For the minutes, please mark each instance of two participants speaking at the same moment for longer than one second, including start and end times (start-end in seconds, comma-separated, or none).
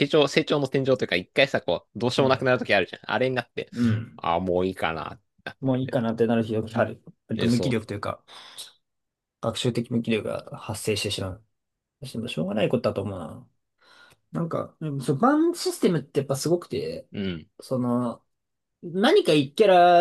none